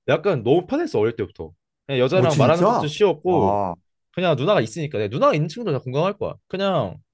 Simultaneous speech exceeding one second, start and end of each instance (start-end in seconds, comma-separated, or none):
2.2-3.6